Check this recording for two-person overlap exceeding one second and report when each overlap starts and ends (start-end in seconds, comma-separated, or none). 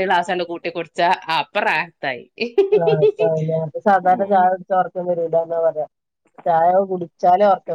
none